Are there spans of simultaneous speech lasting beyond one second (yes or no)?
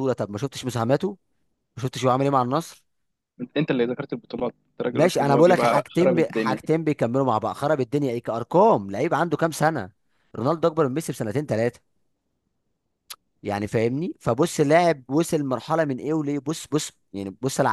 yes